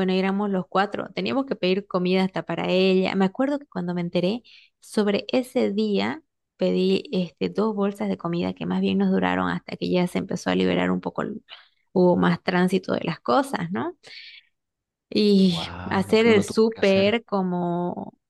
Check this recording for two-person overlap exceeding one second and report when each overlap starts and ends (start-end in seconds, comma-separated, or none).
15.5-17.2